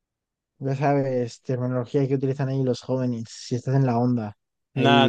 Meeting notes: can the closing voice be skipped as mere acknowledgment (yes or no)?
no